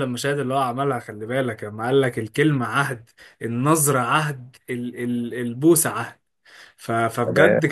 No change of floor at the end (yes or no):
yes